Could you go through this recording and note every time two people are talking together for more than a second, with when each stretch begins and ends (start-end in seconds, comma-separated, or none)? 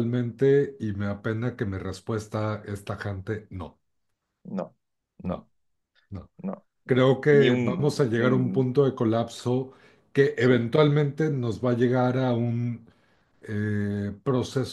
6.9-8.8